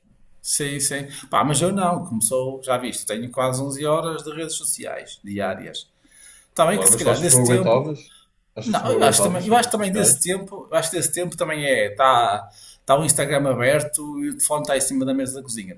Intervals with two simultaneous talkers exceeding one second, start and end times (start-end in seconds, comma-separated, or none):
6.7-7.9, 8.6-10.2